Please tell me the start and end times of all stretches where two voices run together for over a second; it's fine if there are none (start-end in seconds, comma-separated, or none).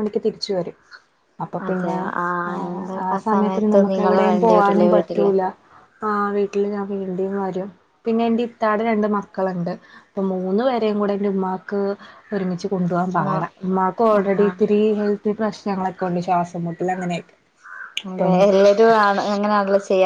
2.7-5.3